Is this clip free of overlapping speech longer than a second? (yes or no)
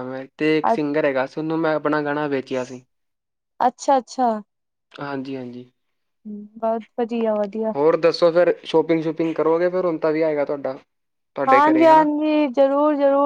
yes